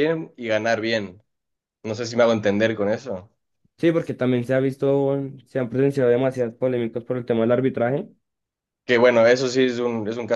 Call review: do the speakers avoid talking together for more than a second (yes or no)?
yes